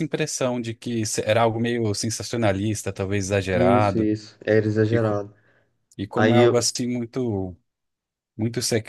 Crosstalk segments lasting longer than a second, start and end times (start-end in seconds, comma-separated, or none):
none